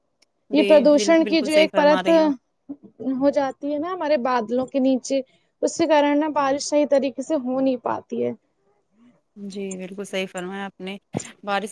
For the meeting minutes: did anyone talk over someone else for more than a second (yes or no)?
yes